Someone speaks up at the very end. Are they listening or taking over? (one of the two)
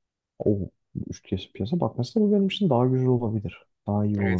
taking over